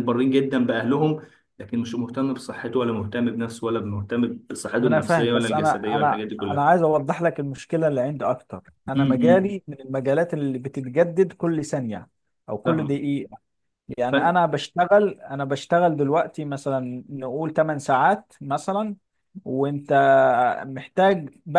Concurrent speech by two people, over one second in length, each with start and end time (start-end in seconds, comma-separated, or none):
4.8-6.6